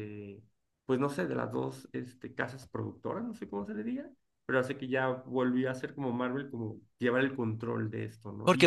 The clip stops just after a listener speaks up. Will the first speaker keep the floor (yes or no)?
no